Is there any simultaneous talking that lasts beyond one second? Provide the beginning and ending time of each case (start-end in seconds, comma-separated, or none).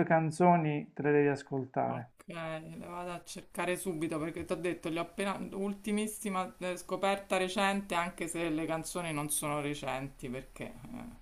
none